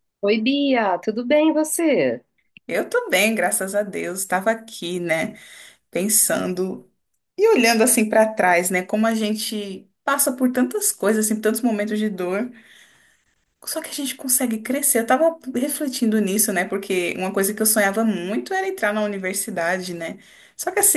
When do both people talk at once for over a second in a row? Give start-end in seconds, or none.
none